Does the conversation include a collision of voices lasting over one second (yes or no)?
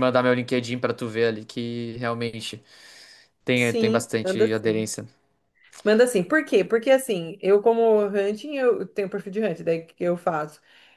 yes